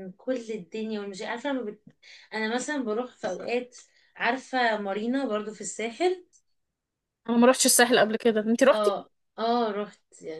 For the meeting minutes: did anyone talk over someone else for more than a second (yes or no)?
no